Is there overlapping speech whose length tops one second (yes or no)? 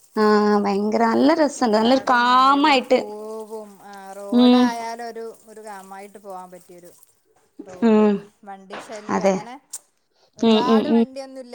yes